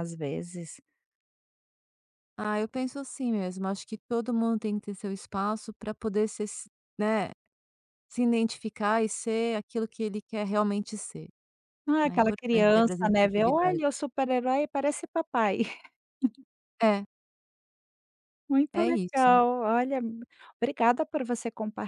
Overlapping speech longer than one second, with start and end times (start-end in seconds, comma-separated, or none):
12.0-13.8